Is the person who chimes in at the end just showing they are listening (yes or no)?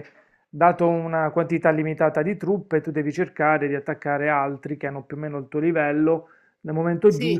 yes